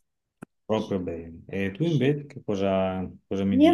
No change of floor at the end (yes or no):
no